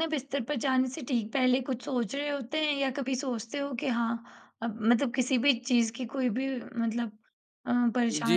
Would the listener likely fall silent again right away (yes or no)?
no